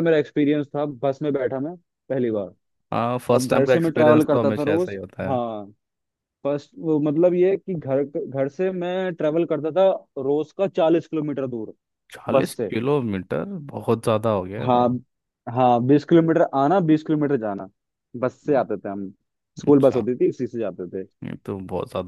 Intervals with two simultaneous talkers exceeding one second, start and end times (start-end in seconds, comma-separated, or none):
3.3-5.3